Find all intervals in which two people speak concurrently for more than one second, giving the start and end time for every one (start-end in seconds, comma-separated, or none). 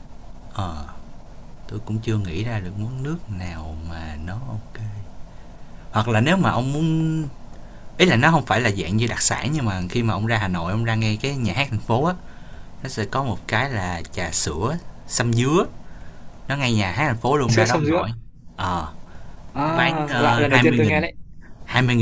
19.7-21.0